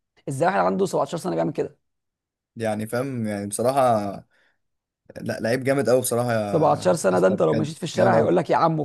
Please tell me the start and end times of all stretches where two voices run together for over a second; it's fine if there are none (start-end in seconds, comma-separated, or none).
6.5-8.3